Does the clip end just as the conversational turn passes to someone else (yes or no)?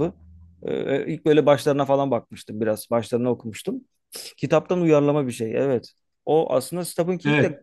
no